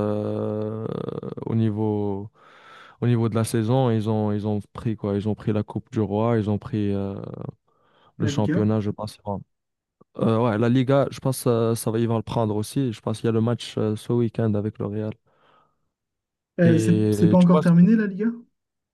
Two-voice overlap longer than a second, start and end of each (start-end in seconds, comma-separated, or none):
16.6-17.9